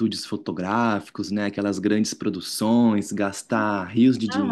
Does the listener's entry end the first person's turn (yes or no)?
yes